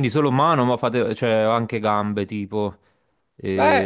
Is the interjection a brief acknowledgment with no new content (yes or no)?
no